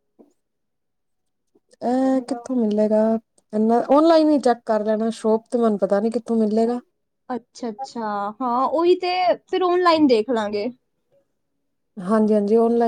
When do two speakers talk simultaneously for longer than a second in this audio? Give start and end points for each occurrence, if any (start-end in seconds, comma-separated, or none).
none